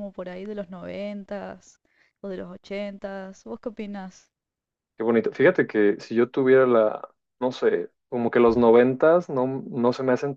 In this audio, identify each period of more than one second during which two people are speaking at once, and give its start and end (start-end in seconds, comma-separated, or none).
none